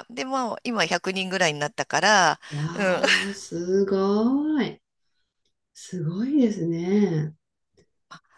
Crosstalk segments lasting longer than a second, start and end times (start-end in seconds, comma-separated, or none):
none